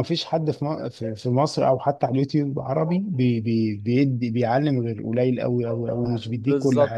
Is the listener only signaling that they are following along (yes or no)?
no